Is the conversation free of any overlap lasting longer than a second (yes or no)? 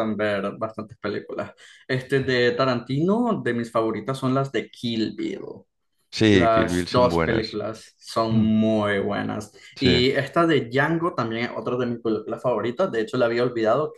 no